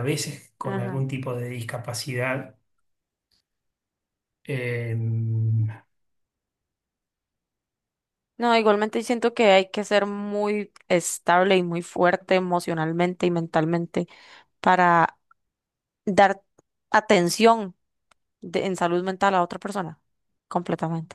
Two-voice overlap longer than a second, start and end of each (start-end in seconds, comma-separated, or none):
none